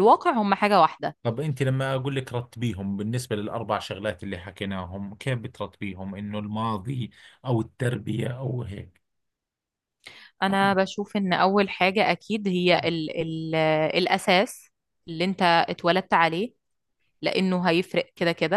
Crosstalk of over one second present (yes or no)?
no